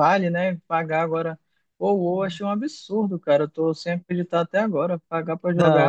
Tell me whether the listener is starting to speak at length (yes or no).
yes